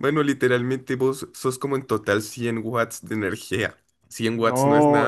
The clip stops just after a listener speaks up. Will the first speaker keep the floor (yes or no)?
no